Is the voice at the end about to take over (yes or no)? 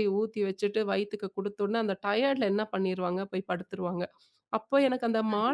no